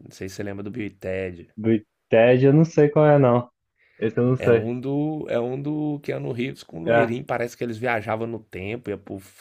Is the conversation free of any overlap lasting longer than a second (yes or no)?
yes